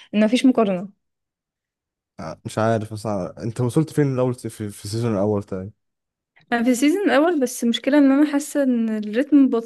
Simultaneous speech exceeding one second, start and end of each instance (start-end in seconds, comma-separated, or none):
none